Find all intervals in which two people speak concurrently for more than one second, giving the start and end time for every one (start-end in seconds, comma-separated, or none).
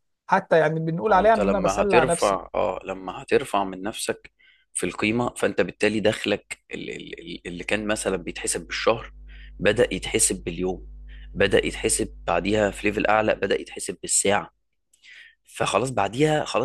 1.1-2.4